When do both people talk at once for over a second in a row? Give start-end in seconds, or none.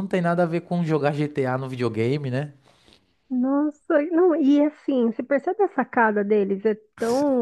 none